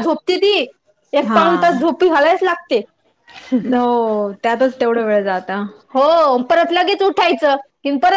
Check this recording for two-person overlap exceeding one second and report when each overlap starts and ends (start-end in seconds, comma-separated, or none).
none